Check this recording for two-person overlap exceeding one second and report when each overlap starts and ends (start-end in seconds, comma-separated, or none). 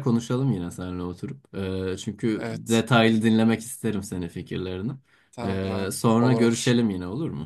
5.4-6.8